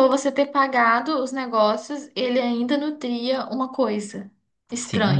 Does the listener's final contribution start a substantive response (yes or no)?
yes